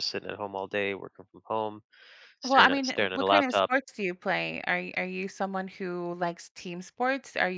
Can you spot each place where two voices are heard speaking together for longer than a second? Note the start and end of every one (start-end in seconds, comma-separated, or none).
2.4-3.7